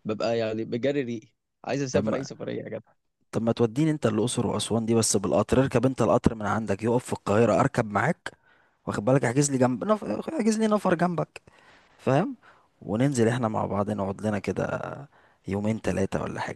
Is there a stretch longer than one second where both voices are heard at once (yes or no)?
no